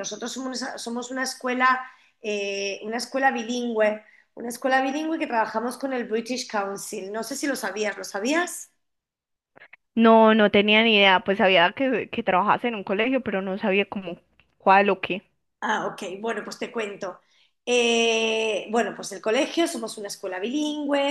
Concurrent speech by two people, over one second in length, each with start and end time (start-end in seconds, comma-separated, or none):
none